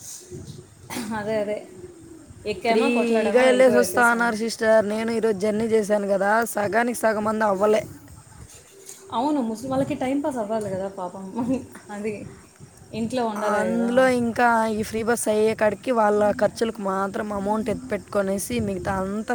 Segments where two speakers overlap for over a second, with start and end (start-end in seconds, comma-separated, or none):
2.7-4.3